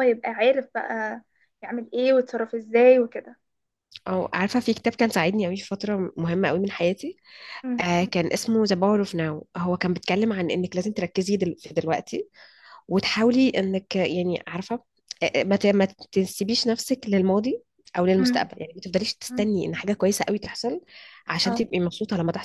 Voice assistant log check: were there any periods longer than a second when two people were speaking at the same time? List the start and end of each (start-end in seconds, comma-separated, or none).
none